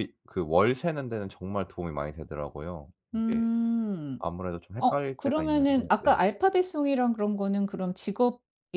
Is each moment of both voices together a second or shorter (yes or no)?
no